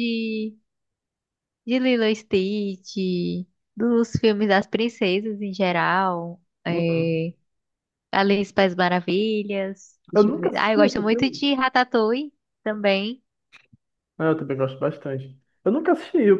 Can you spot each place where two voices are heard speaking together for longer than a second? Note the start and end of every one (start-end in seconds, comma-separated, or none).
10.1-11.5